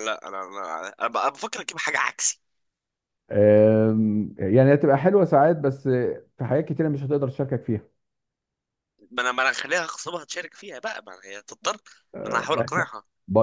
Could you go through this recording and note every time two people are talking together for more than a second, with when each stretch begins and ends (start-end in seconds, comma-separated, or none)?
none